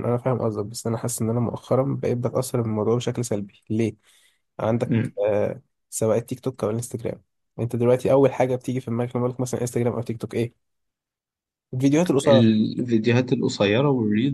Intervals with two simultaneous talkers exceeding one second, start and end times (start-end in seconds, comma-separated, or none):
none